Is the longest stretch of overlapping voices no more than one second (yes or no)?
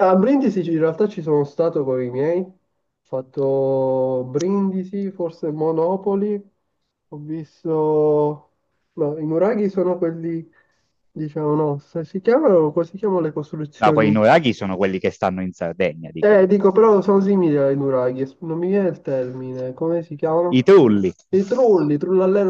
yes